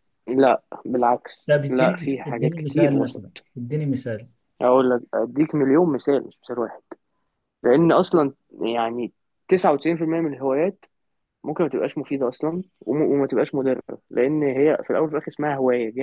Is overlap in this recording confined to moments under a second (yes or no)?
no